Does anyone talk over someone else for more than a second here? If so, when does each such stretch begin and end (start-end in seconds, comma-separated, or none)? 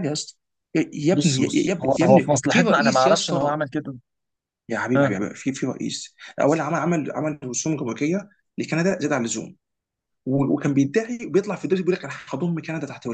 1.1-3.6